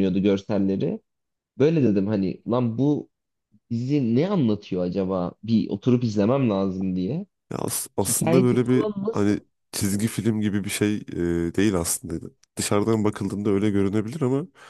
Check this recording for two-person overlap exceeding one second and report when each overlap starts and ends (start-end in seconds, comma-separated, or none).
8.0-9.4